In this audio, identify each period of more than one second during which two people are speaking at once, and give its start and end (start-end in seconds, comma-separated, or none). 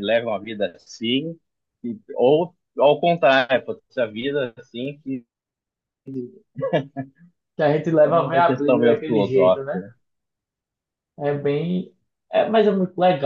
8.0-9.8